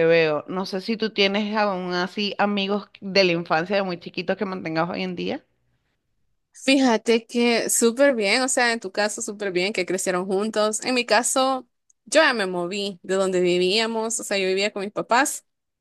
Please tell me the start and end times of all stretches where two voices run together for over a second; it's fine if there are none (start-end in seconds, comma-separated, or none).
none